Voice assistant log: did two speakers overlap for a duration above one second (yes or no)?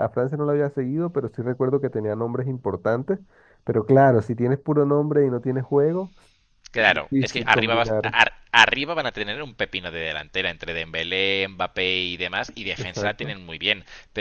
yes